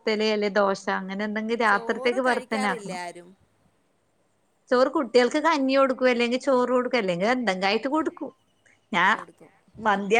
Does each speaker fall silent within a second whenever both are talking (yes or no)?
no